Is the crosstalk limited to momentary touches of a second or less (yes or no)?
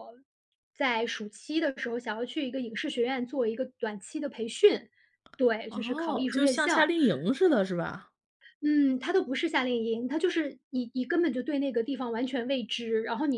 no